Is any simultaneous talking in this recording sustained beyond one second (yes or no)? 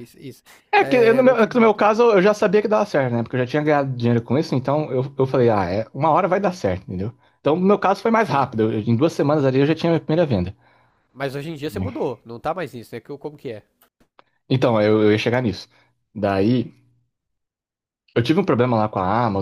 yes